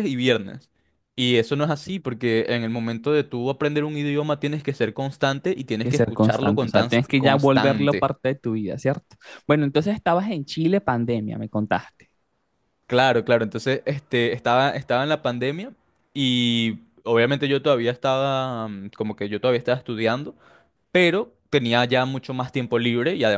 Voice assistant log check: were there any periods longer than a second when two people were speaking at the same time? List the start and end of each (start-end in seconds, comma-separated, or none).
5.8-8.1